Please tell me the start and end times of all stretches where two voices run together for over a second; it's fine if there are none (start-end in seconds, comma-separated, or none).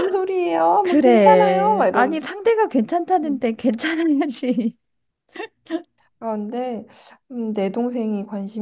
0.8-2.2